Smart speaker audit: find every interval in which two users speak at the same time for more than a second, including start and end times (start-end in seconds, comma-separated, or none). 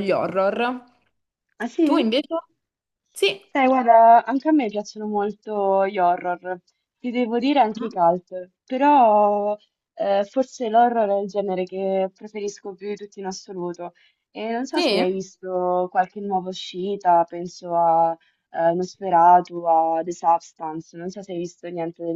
none